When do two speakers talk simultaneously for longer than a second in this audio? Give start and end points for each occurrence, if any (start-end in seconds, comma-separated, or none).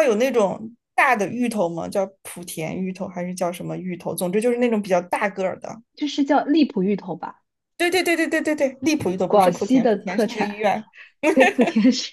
9.3-10.6